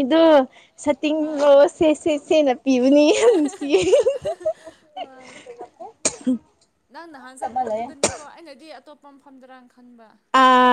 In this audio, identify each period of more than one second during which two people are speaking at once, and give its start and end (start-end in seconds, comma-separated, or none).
none